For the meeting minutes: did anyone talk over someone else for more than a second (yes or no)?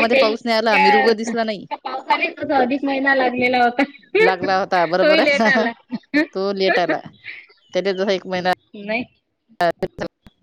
no